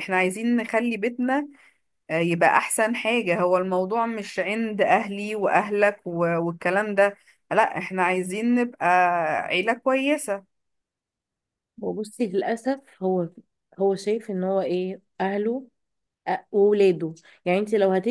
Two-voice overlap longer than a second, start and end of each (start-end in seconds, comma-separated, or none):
none